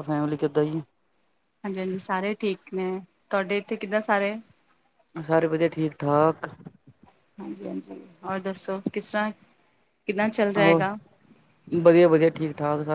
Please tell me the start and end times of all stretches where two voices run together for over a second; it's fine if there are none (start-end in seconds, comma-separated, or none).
none